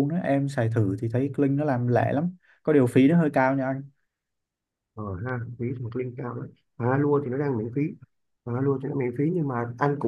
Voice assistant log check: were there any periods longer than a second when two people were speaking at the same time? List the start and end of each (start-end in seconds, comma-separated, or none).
none